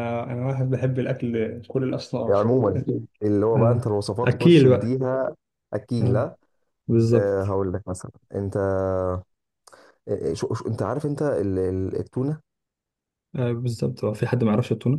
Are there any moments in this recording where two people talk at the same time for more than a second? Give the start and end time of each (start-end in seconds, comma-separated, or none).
3.5-5.0